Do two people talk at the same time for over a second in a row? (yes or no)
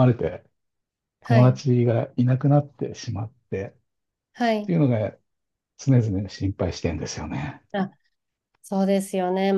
no